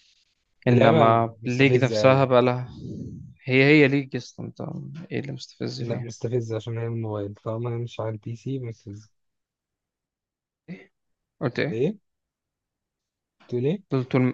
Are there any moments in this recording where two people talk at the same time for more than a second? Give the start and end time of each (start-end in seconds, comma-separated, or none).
0.7-2.3